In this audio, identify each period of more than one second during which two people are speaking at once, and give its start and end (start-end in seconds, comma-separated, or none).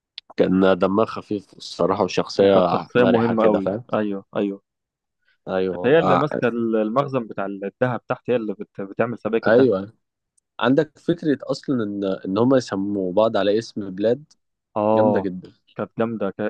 2.4-3.8